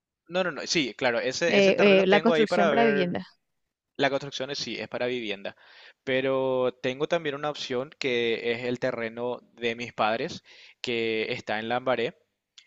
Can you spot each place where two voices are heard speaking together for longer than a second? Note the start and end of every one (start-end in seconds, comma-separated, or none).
1.5-3.2